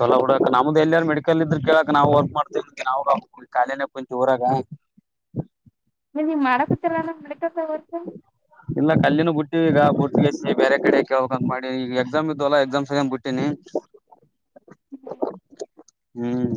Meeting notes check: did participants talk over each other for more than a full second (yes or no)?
no